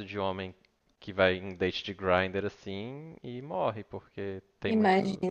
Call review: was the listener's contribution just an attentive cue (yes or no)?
yes